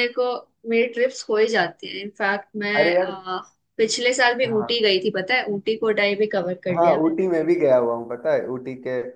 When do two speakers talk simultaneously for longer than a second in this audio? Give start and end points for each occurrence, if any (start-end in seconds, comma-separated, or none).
none